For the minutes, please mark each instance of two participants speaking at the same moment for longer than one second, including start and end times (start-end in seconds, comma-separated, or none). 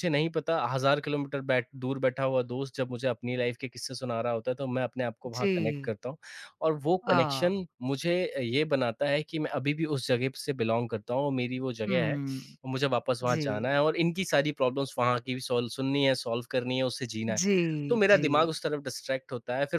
none